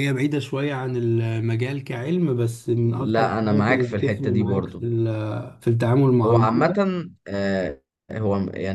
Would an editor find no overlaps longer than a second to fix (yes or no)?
no